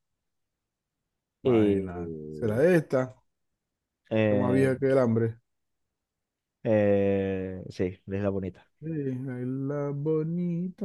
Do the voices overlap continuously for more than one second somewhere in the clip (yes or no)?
yes